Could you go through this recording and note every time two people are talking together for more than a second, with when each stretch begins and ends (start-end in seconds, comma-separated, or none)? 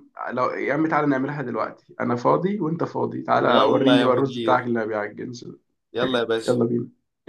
3.4-4.7